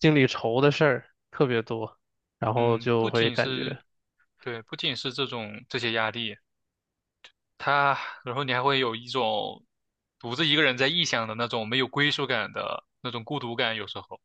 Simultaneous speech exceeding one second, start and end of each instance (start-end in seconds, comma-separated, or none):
2.5-3.8